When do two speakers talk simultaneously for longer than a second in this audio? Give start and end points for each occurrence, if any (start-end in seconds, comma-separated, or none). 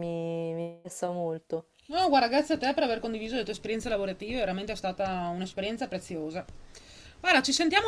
none